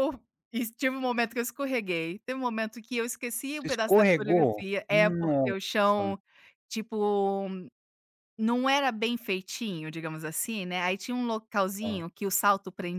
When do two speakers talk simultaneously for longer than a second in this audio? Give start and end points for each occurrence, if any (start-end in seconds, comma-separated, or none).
3.6-6.2